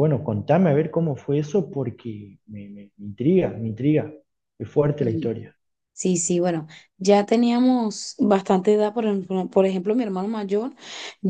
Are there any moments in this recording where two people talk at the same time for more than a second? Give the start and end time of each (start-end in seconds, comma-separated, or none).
none